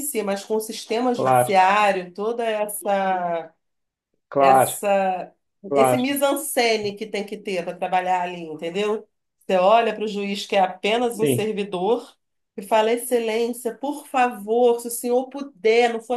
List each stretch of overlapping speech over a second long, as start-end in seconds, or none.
none